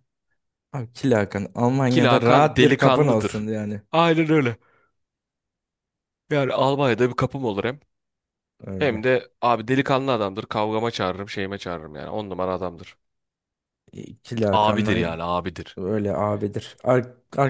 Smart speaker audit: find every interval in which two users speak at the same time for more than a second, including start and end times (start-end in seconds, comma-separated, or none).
1.9-3.5